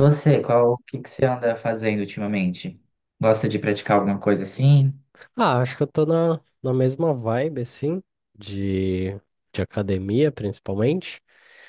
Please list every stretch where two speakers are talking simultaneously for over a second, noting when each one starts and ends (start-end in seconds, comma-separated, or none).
none